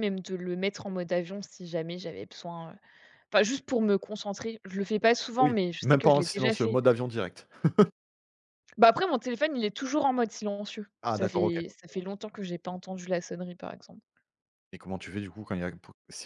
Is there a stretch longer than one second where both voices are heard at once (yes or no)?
yes